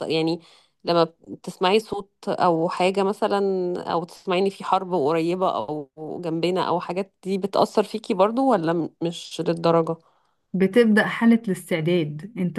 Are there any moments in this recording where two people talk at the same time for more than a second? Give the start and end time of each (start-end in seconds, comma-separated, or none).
none